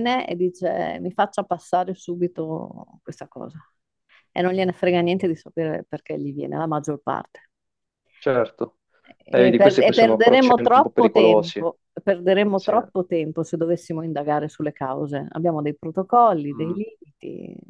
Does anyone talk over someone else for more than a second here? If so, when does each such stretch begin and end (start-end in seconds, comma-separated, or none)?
9.3-11.7